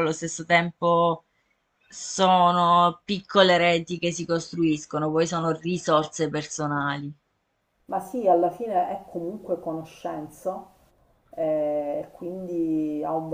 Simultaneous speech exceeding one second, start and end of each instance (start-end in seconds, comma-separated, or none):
none